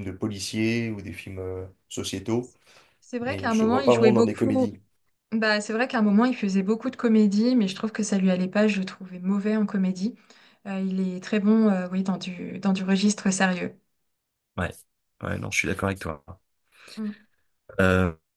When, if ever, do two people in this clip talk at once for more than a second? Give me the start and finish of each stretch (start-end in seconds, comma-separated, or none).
3.2-4.7